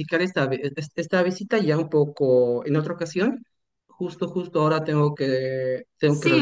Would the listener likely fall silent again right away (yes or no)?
no